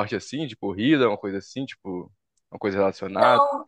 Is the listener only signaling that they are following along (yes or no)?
no